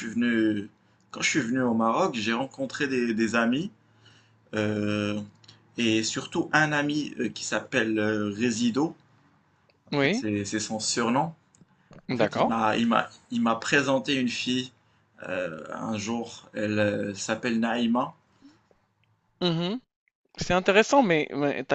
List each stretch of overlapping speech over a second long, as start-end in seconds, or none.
none